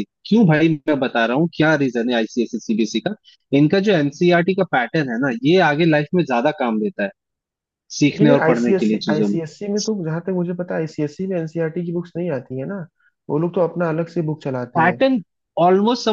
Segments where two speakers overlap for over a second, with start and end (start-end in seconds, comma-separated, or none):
8.1-9.4